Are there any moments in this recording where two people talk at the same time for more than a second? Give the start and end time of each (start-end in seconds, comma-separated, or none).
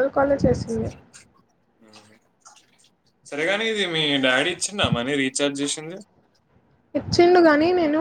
none